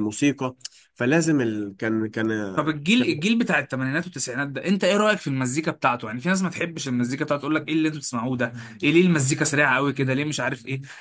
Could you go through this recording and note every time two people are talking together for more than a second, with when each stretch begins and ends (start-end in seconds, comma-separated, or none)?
none